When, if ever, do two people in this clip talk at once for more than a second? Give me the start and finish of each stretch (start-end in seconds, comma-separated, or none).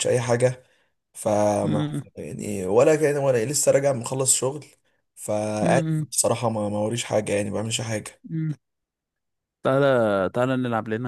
none